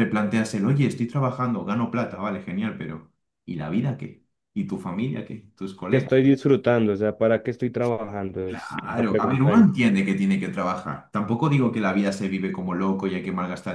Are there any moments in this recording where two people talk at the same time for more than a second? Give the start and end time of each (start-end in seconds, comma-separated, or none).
8.4-9.7